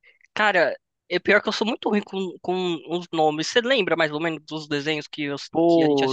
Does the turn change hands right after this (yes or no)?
yes